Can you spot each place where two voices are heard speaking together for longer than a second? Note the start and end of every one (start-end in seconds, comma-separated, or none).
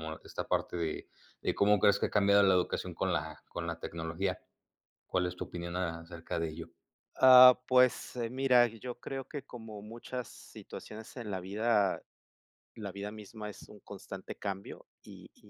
none